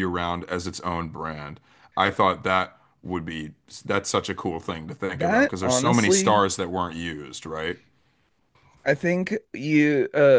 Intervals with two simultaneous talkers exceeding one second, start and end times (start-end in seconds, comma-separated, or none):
5.1-6.4